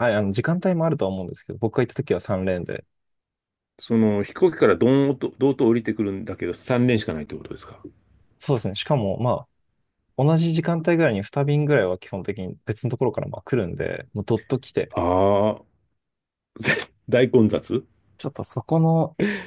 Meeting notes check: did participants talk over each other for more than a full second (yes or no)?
no